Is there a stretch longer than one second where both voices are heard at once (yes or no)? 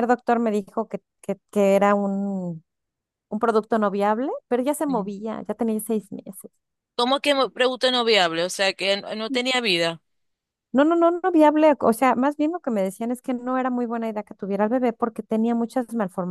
no